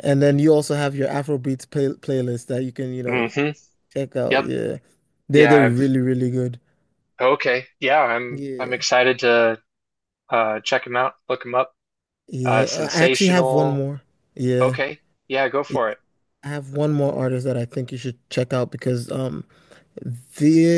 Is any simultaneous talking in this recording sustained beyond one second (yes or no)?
yes